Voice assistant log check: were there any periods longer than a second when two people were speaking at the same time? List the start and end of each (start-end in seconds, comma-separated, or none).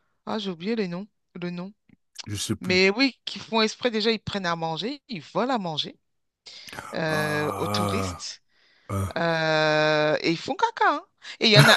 7.1-8.3